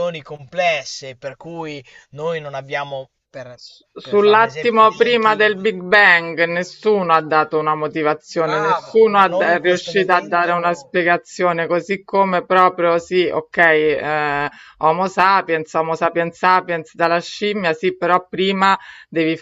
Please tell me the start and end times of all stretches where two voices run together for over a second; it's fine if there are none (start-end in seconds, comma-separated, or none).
4.1-5.7, 8.4-11.0